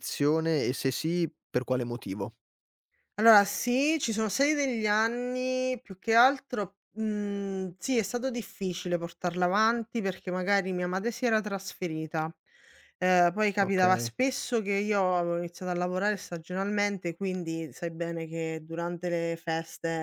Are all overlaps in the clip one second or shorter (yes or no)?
yes